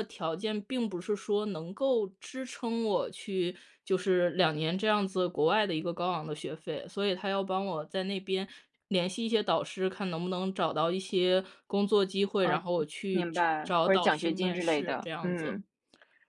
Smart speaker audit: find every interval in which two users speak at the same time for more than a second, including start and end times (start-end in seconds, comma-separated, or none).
13.2-15.6